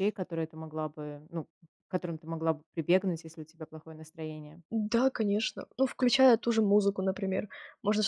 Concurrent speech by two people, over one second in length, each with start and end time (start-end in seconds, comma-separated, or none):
none